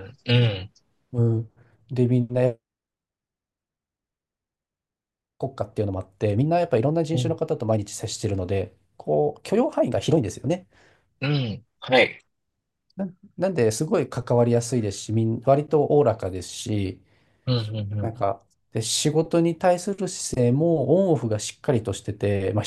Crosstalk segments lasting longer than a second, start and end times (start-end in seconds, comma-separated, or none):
none